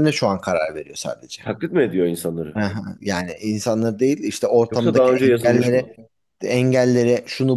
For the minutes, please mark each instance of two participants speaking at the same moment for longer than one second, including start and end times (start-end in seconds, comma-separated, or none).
4.7-5.9